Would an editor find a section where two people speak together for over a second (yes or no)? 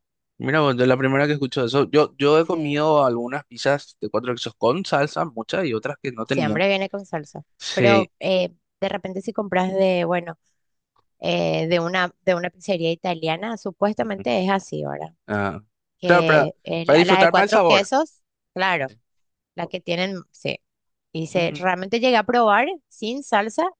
yes